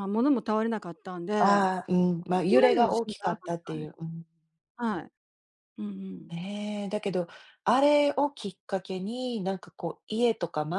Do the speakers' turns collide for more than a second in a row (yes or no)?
yes